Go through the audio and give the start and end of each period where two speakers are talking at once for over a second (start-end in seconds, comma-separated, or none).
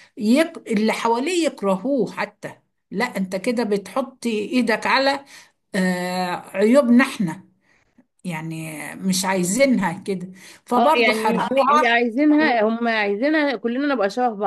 10.8-12.0